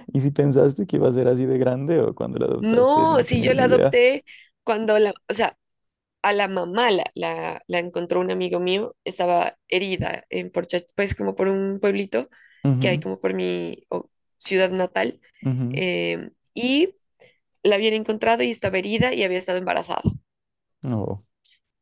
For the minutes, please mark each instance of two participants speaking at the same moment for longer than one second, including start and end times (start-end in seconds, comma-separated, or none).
2.6-4.0